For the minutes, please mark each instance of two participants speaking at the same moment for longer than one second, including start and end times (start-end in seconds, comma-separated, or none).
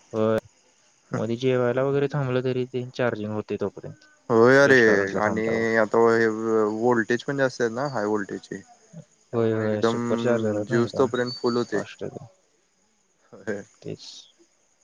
none